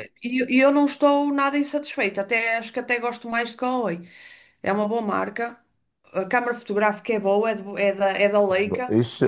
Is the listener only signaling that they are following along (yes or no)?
no